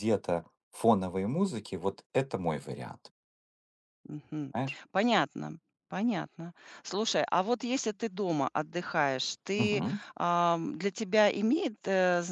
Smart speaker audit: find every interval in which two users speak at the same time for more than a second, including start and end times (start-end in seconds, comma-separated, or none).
none